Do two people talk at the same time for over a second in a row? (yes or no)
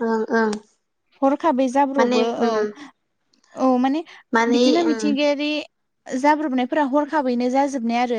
no